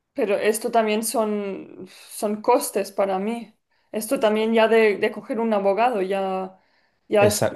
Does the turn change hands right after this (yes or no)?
no